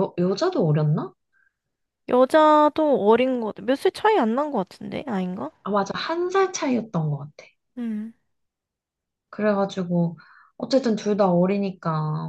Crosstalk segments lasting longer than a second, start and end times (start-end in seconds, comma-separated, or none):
none